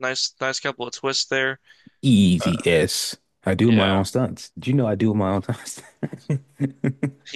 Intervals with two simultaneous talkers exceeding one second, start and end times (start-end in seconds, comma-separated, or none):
none